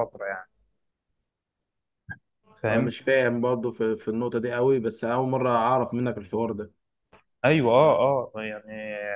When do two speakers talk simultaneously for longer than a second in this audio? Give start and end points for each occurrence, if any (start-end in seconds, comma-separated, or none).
none